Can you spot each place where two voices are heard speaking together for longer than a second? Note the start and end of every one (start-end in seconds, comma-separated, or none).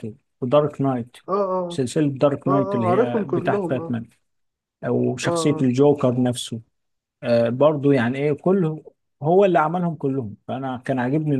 2.5-4.0